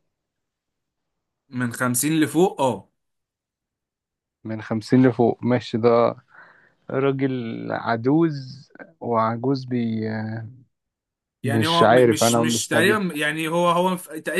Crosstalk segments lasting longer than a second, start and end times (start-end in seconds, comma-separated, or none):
11.4-13.0